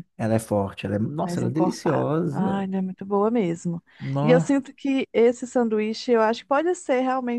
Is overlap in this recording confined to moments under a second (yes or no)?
no